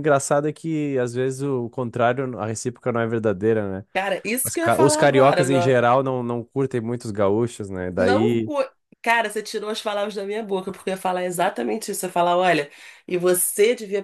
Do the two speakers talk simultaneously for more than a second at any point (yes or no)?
yes